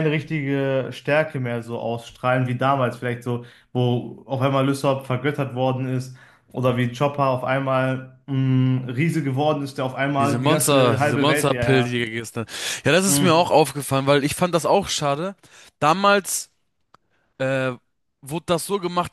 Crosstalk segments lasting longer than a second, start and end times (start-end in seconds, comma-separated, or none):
10.1-11.9